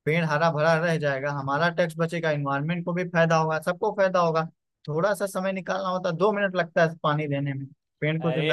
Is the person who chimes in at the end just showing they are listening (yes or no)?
no